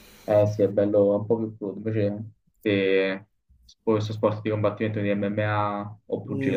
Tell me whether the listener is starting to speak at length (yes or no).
yes